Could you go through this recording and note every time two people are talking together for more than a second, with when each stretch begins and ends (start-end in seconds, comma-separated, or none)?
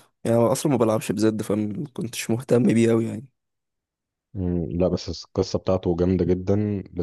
none